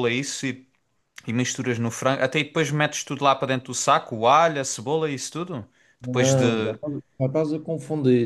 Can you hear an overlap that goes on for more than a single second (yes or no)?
no